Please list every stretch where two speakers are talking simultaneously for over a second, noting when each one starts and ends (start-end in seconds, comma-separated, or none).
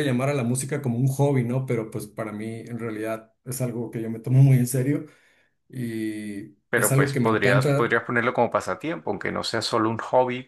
6.7-8.0